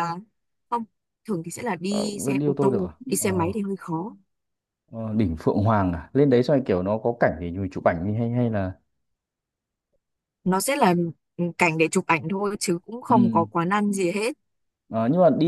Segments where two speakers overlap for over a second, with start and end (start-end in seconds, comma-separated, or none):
1.9-3.5